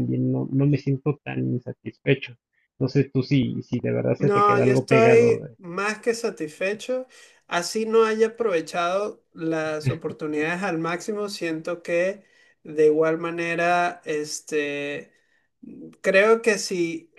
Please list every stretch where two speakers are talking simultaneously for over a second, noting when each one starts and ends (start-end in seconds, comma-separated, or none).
4.2-5.6